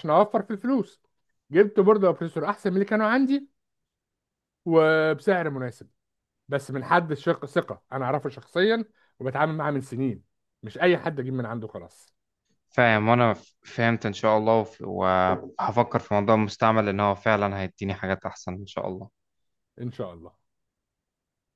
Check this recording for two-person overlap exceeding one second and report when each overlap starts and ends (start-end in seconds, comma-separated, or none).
none